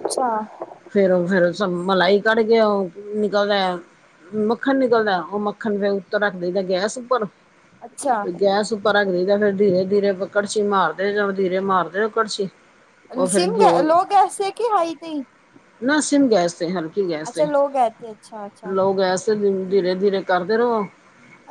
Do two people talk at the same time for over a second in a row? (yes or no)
no